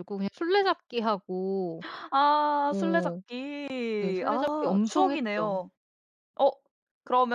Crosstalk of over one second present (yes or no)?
yes